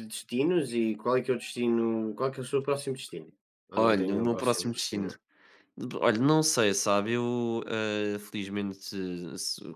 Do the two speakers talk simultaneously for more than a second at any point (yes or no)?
yes